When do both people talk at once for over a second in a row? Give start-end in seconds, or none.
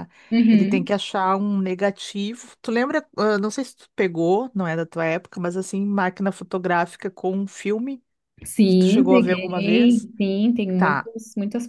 8.7-10.1